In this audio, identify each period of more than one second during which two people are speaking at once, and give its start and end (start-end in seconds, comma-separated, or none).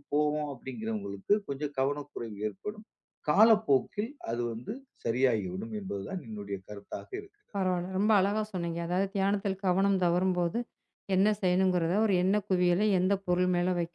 none